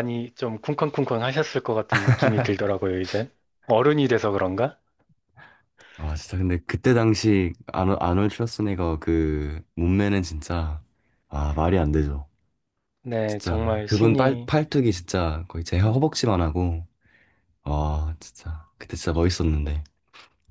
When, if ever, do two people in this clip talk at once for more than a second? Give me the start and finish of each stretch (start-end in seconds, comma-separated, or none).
13.3-14.5